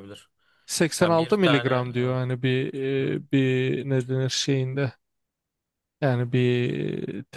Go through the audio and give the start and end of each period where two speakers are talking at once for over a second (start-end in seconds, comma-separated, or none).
1.0-2.2